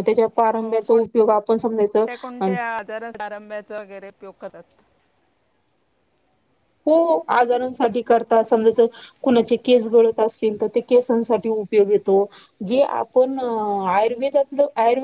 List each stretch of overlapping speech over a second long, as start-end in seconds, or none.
0.6-2.1